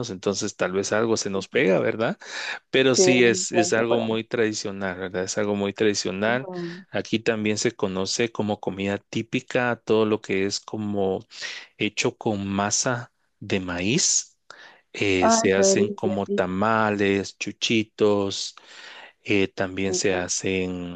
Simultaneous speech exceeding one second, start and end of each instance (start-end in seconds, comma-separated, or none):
3.0-4.2, 15.2-16.5